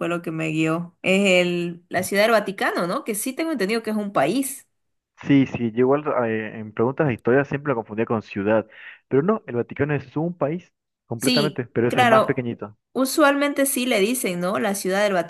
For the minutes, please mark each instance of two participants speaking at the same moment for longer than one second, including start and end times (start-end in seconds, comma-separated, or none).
11.2-12.5